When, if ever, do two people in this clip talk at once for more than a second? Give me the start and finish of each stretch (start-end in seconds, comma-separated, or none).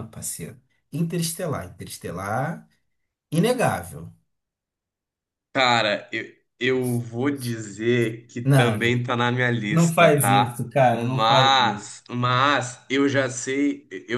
9.7-11.9